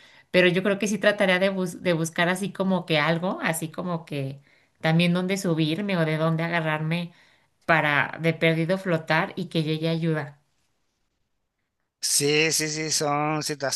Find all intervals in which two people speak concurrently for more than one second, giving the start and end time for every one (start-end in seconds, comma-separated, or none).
none